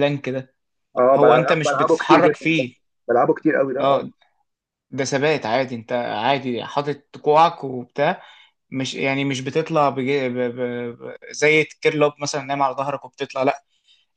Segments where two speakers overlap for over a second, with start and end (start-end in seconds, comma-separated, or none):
1.1-2.6